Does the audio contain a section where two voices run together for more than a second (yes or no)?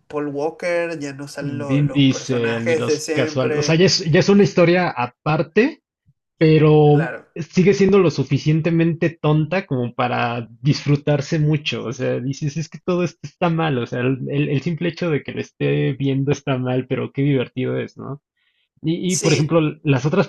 yes